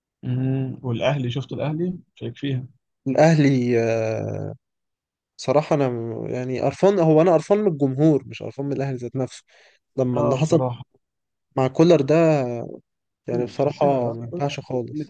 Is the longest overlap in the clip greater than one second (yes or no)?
yes